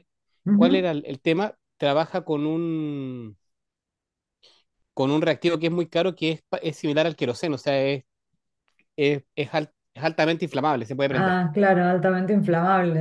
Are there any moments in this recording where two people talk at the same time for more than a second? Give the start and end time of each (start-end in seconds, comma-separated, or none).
none